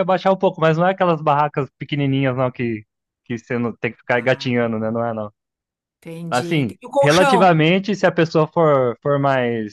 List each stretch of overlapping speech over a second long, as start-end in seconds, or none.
6.3-7.7